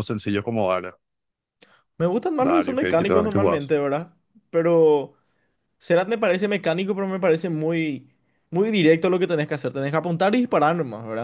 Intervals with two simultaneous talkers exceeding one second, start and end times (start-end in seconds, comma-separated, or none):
2.4-3.7